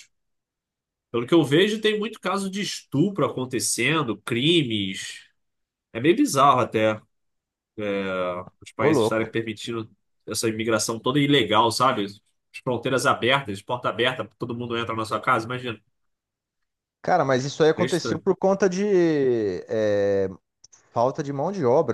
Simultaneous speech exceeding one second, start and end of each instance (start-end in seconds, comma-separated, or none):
none